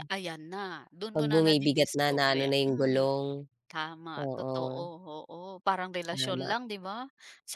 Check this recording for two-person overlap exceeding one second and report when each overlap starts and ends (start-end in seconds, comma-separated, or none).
1.1-3.0